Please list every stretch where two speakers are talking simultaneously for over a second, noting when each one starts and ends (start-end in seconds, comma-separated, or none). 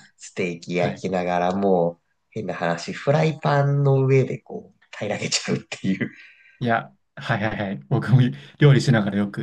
none